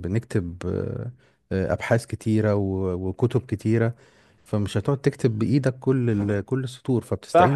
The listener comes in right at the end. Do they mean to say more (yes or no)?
yes